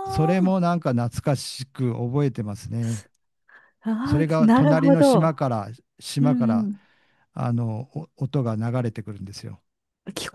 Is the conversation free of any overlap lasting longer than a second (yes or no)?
no